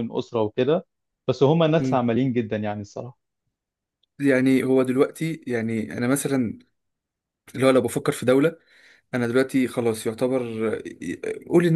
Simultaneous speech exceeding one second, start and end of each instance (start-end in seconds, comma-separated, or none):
none